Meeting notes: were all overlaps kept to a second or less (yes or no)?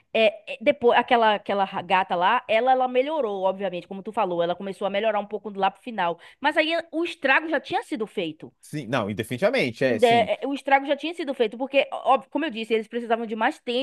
yes